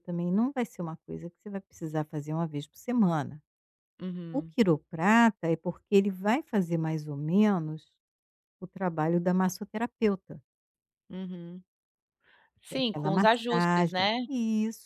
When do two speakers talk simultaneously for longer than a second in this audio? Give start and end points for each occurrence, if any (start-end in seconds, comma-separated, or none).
12.7-14.2